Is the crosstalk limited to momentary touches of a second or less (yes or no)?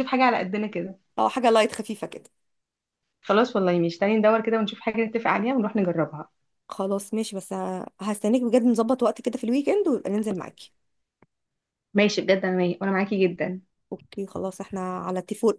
yes